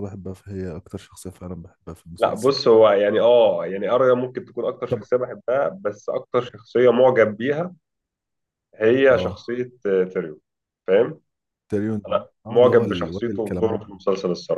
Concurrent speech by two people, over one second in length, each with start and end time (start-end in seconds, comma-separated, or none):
12.1-13.9